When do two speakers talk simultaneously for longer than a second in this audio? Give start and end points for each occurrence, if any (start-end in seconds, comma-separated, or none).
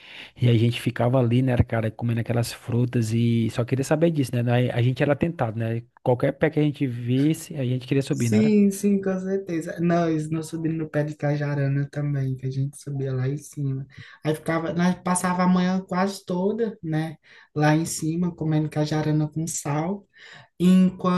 none